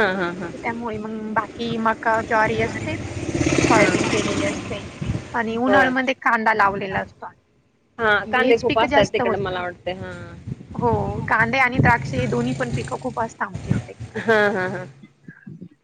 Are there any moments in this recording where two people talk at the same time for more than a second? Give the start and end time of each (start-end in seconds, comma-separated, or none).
none